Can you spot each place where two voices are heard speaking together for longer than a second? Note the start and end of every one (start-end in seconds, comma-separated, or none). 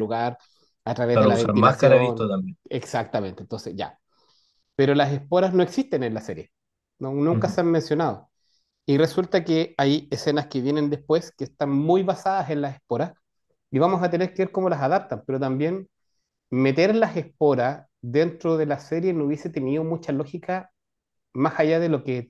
1.1-2.3